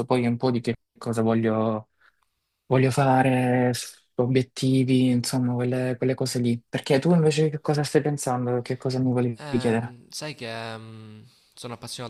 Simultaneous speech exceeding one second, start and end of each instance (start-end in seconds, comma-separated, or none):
none